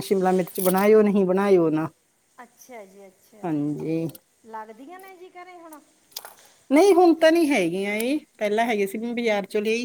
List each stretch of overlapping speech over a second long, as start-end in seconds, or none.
none